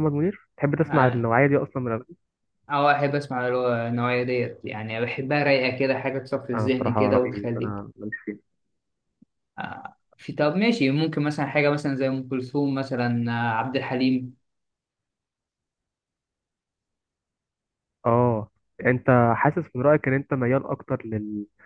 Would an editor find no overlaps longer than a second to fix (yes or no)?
no